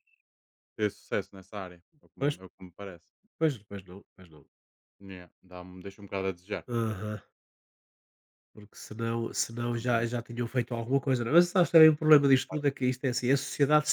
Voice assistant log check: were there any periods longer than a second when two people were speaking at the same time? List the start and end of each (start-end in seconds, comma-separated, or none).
none